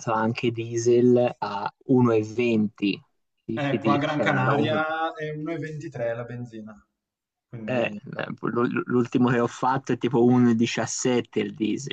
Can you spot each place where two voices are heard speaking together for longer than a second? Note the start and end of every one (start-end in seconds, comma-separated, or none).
3.5-4.8